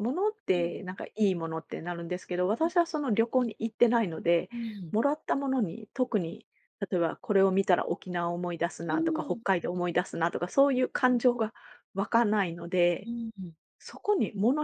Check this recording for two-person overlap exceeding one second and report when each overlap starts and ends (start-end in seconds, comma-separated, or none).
none